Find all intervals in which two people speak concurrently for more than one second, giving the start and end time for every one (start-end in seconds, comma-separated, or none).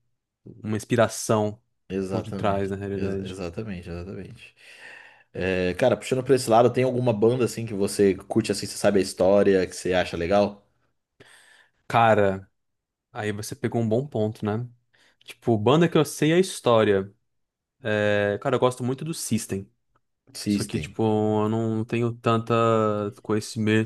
2.1-3.4